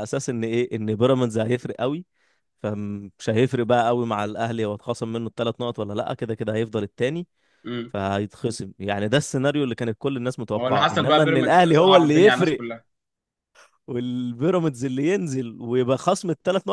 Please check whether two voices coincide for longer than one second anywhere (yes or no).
yes